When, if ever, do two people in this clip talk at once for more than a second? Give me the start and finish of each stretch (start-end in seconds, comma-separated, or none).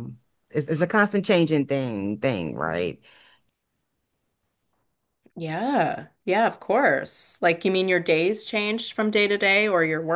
none